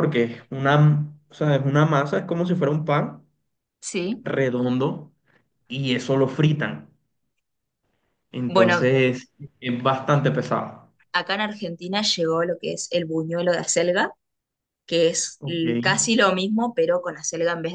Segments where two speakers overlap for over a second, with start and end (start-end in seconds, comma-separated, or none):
none